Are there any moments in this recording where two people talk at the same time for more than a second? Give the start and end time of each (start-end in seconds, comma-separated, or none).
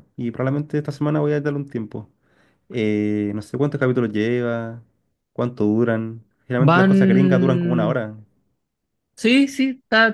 6.7-8.0